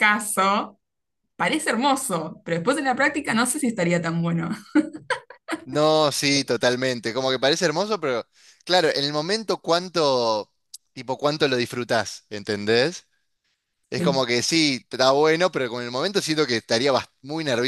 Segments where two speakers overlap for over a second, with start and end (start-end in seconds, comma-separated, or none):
none